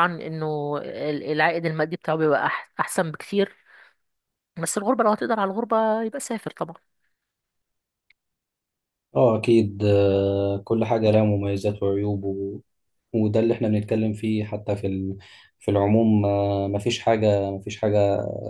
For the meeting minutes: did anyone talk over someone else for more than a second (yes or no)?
no